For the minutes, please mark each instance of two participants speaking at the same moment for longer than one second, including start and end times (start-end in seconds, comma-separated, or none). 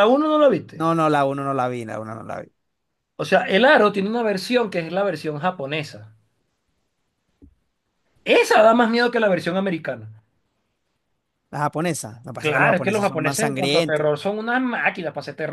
12.4-14.1